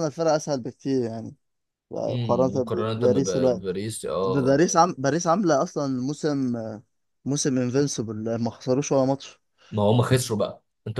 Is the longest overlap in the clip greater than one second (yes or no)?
yes